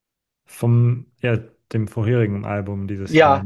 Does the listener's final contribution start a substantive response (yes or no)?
yes